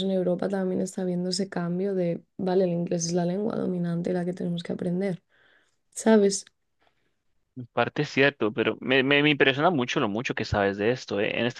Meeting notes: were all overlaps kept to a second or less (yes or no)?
yes